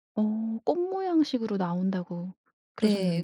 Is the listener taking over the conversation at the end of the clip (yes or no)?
yes